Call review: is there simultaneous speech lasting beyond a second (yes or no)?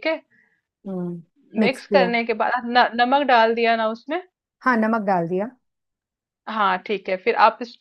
no